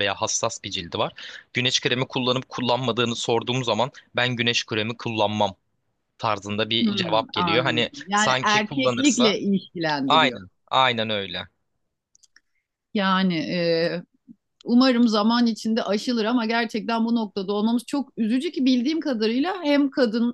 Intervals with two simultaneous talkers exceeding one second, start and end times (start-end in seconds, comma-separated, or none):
6.8-9.4